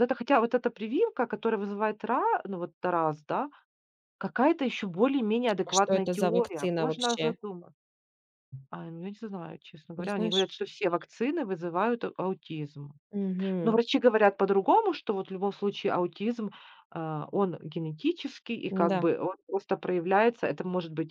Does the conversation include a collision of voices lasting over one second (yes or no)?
yes